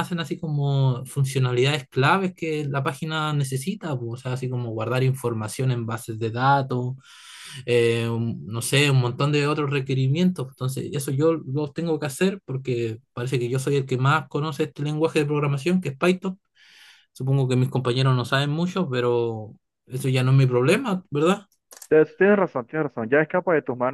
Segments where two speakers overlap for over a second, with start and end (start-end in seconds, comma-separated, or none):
none